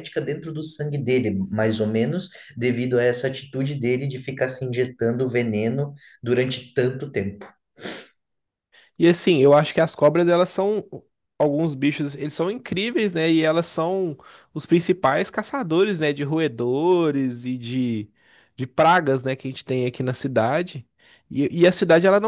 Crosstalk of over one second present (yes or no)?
no